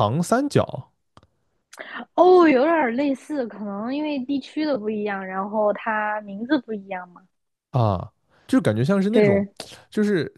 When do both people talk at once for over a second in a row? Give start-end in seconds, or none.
none